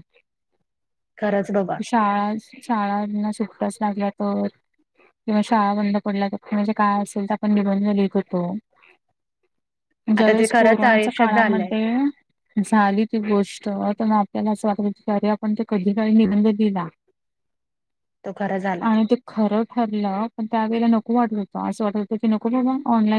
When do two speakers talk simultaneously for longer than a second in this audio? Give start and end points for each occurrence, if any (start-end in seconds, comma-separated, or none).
10.2-11.7